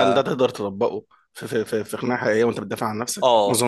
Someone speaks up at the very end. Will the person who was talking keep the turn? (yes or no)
no